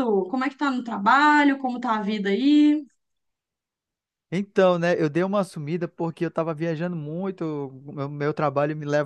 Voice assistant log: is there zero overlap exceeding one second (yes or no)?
yes